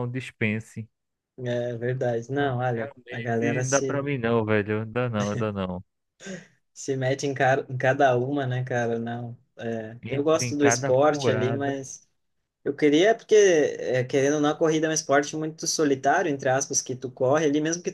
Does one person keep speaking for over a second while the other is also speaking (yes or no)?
yes